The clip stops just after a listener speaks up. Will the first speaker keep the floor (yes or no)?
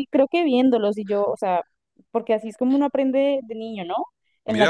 no